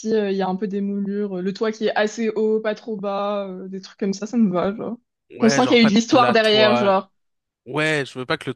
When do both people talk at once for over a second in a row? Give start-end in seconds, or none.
5.4-7.0